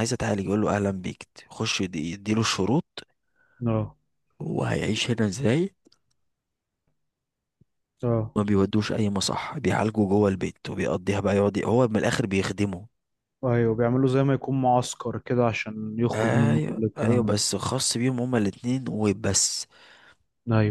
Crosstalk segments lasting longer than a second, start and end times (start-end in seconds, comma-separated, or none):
16.1-17.4